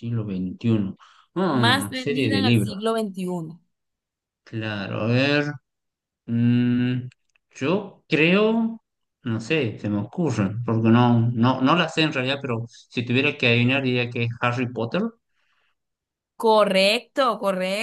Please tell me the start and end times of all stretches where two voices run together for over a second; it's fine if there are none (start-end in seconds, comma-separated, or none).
1.5-2.8